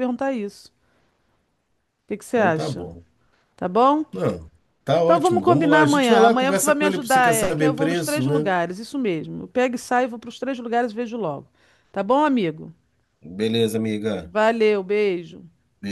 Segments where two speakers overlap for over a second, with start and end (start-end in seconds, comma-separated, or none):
5.0-8.5